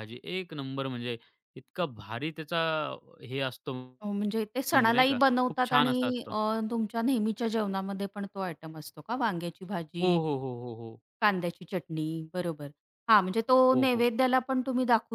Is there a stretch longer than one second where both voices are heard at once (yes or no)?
yes